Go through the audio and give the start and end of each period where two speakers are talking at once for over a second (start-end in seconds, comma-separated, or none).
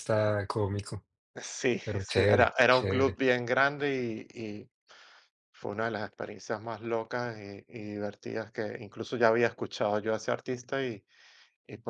1.8-3.2